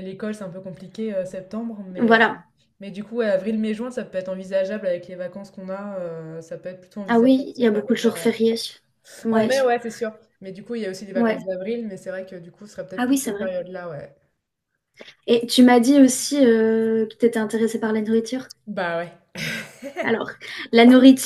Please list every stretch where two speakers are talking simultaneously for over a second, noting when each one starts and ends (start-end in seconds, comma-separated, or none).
7.1-8.3